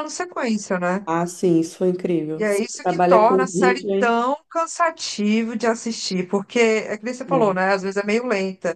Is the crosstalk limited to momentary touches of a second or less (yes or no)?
no